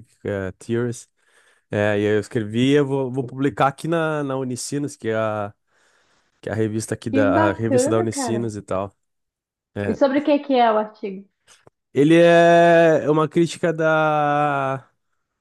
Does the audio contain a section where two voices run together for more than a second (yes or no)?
yes